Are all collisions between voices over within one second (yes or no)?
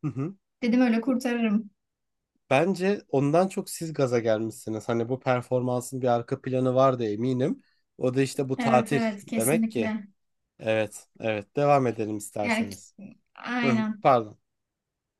no